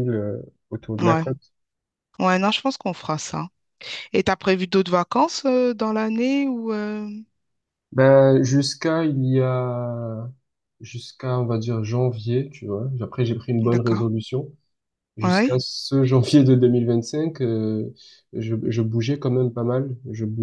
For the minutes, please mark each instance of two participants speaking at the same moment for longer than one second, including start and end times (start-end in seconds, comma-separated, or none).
none